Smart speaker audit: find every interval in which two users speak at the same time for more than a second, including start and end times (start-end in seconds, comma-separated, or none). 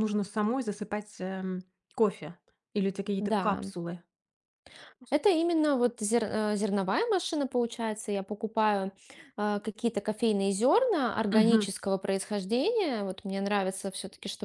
none